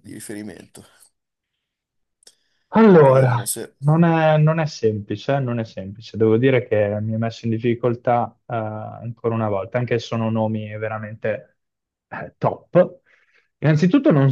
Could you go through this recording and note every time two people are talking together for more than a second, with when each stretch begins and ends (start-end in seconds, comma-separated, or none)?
none